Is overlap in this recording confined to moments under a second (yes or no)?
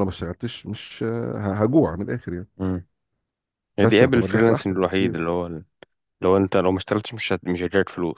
no